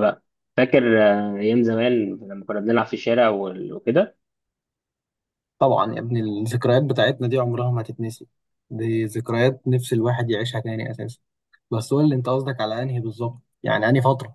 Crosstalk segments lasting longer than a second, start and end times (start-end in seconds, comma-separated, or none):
none